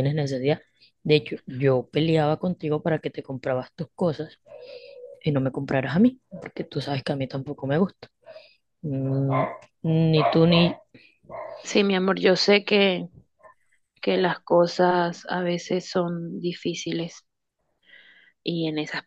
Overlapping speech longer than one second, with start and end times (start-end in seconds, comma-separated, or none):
none